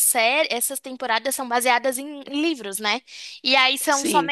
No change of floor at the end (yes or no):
yes